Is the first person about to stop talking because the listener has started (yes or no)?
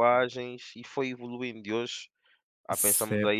yes